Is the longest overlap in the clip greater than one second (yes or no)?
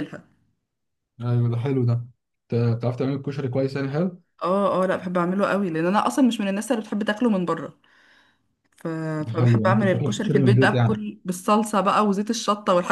yes